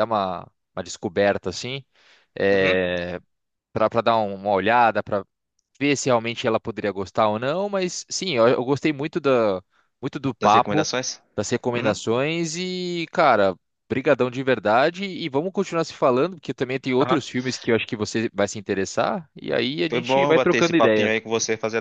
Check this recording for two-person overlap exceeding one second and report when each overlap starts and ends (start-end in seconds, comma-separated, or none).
19.9-21.1